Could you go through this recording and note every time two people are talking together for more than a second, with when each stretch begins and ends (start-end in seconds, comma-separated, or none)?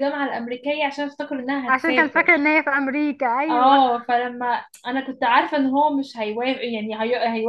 none